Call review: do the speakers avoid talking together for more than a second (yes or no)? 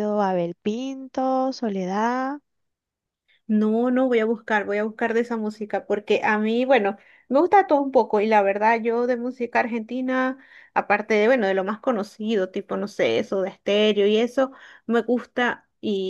yes